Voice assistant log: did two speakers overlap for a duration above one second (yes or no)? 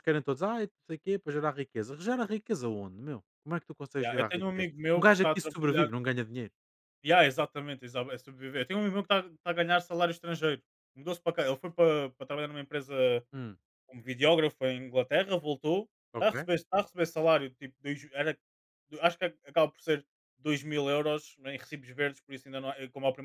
yes